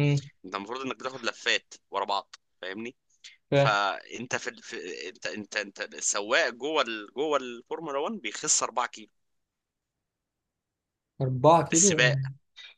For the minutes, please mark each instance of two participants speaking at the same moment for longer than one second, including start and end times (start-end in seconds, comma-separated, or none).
none